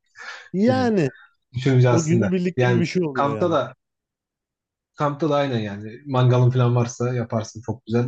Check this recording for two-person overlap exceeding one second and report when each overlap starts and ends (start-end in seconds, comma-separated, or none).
1.9-3.6